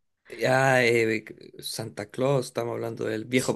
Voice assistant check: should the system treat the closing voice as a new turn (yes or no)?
yes